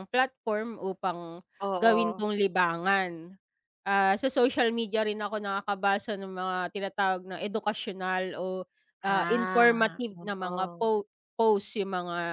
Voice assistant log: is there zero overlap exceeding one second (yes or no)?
no